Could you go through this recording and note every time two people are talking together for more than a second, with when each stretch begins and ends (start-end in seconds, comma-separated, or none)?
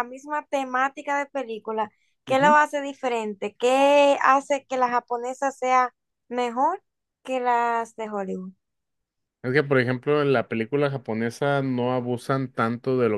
none